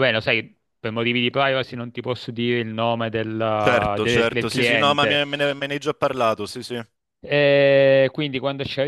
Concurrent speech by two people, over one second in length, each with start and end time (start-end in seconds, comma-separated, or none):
3.6-5.2